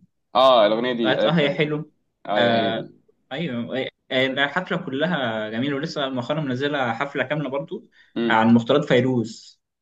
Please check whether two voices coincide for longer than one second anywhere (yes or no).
no